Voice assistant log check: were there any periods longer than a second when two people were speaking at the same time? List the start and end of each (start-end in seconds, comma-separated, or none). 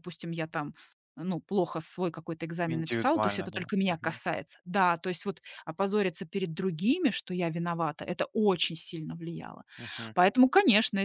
2.7-4.2